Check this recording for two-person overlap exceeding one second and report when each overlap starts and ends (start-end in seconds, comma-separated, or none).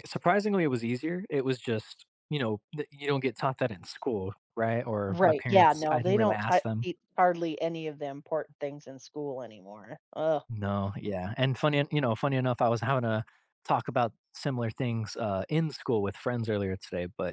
5.1-6.9